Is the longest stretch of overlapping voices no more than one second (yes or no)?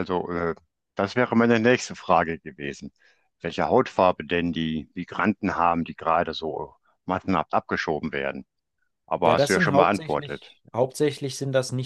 no